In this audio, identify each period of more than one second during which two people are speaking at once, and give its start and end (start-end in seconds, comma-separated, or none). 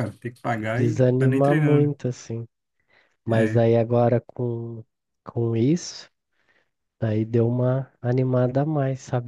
0.7-1.9